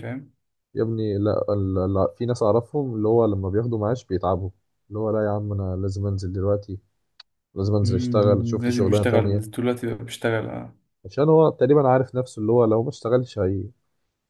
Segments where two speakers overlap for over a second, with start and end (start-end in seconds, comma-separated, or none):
7.8-9.4